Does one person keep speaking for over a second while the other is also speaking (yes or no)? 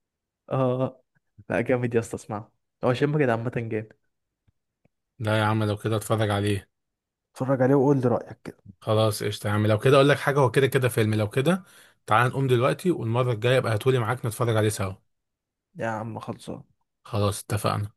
no